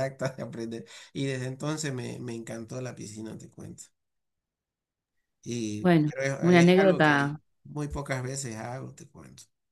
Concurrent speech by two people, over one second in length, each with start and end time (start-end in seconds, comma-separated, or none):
5.8-7.4